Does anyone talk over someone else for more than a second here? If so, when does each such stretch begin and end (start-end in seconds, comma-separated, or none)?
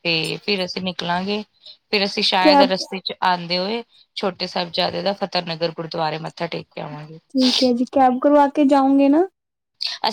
none